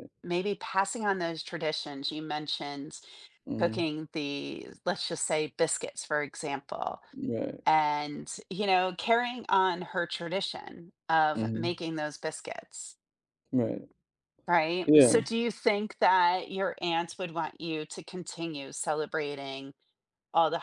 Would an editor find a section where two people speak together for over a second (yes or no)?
no